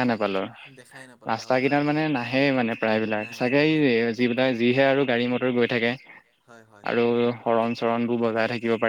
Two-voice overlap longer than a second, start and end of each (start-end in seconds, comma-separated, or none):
1.3-4.1